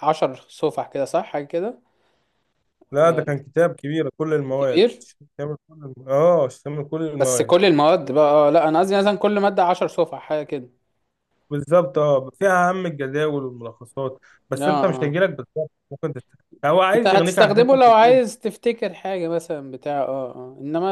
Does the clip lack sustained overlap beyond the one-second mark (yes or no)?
no